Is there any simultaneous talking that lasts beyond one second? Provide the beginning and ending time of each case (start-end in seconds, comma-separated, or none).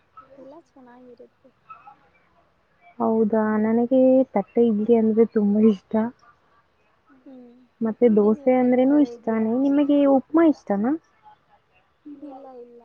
8.1-9.8